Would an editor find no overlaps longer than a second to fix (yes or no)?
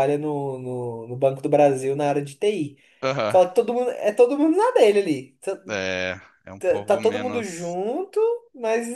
no